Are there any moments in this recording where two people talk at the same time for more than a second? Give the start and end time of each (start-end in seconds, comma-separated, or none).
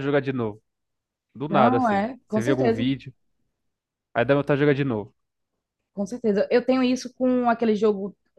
1.5-2.9